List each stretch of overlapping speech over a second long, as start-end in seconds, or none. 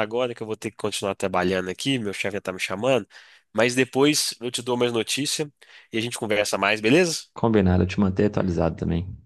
none